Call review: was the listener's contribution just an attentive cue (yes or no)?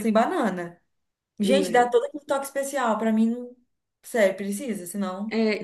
no